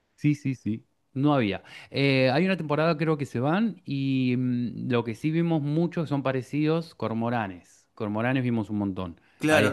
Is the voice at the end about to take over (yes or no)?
yes